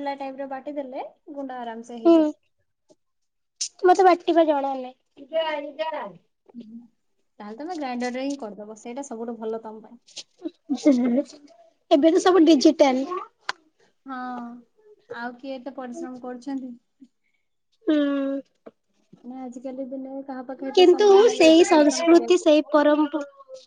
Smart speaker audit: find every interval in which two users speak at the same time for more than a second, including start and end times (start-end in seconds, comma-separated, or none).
20.8-22.5